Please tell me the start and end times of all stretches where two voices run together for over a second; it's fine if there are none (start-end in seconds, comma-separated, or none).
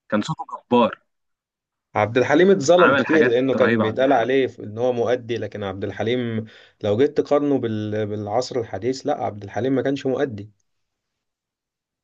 2.8-4.3